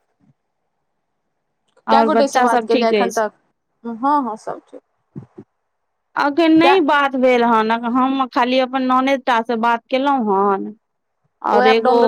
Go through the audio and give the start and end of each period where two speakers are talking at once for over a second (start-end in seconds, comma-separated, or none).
1.9-3.2